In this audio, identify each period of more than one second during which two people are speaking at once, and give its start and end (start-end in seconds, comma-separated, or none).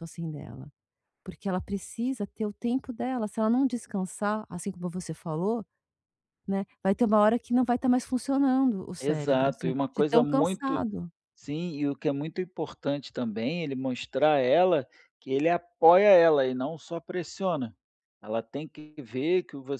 9.0-10.8